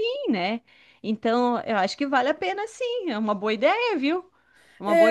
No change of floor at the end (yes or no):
no